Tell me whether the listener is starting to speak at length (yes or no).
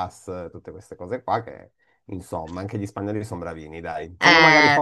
no